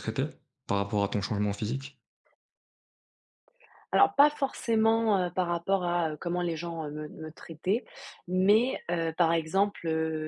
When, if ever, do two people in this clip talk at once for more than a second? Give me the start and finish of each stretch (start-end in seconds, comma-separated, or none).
none